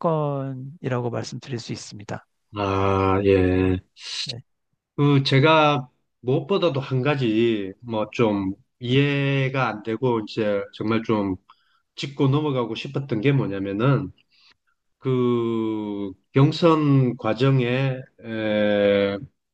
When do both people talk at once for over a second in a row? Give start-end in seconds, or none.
none